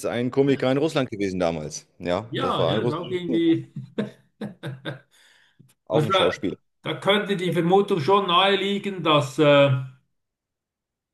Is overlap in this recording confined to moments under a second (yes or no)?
no